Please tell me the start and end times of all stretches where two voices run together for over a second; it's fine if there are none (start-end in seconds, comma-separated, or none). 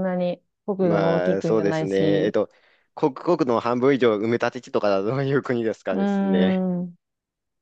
0.8-2.4